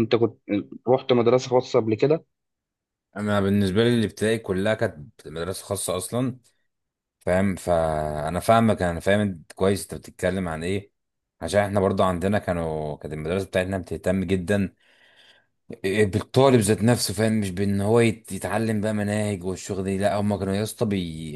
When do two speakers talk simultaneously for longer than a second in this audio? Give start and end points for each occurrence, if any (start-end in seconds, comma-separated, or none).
none